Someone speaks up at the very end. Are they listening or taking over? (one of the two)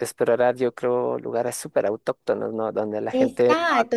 taking over